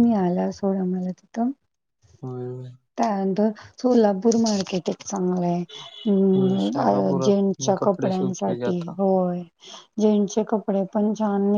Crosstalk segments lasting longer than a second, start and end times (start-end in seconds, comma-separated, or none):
6.4-8.9